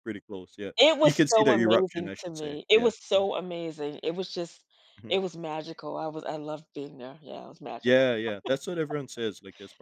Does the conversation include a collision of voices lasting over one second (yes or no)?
yes